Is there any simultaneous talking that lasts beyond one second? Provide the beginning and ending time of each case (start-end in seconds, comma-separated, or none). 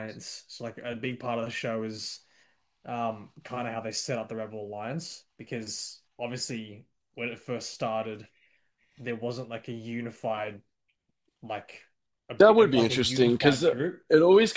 12.4-14.0